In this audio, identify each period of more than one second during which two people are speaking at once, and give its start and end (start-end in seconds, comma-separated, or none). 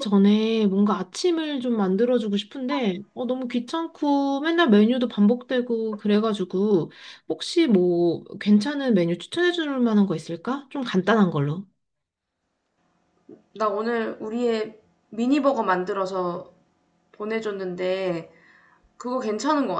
none